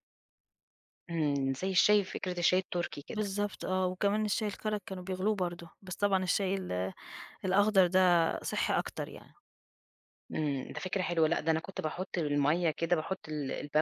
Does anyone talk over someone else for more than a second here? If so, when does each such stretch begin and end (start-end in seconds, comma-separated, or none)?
none